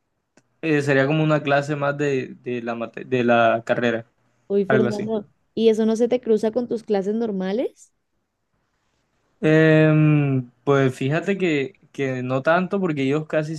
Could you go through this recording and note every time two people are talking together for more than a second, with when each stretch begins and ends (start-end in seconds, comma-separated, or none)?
none